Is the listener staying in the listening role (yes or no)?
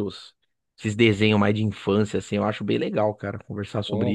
no